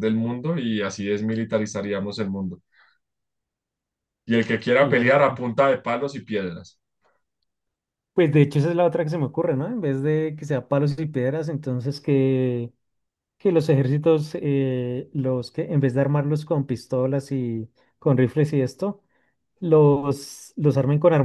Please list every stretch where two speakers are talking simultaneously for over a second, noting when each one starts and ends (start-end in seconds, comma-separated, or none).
none